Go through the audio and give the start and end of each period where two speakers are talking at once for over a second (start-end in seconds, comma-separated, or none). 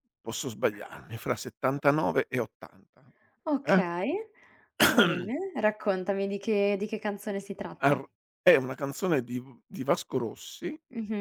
none